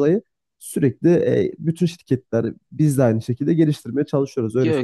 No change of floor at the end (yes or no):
no